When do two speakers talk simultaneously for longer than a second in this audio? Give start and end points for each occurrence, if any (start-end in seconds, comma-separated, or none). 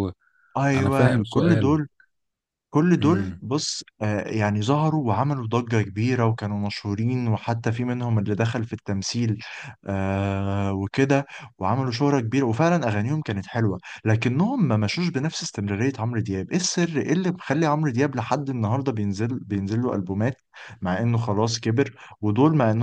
0.6-1.8